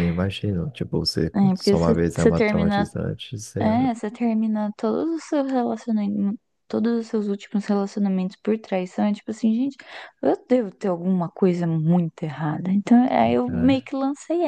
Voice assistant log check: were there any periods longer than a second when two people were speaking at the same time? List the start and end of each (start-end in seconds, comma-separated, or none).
1.3-2.9